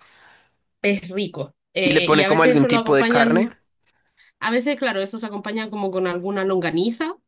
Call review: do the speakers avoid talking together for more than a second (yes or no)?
no